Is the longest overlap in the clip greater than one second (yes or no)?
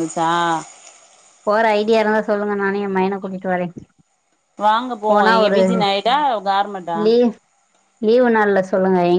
no